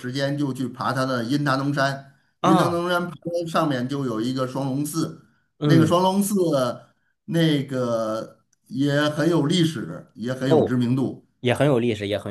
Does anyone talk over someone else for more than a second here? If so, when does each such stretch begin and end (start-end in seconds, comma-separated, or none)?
none